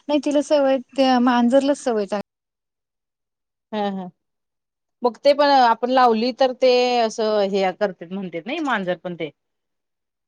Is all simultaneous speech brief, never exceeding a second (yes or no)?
yes